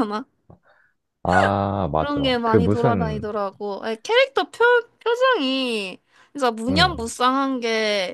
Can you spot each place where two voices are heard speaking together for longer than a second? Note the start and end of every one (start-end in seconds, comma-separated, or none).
2.0-3.3